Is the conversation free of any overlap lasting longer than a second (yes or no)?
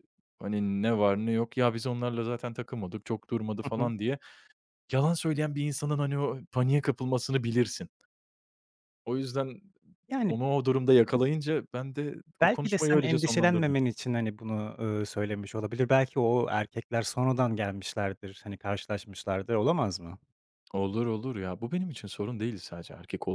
no